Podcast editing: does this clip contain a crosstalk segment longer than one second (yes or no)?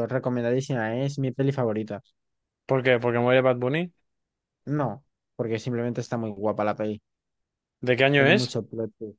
no